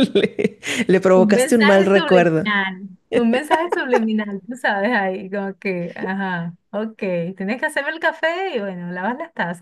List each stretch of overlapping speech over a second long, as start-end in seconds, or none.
1.1-2.5